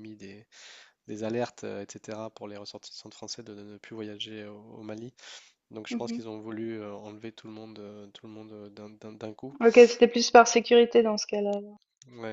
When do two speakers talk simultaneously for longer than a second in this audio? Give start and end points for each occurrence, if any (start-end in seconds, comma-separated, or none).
none